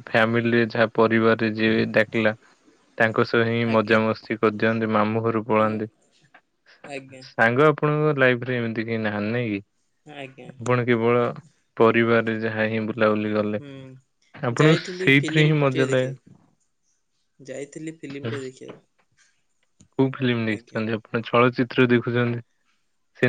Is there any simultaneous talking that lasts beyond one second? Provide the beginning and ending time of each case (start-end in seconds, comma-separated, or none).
14.6-16.1